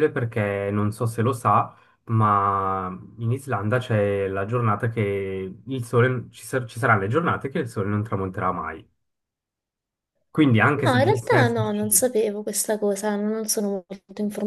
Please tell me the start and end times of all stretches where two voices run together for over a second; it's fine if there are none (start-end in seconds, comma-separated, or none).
10.8-12.1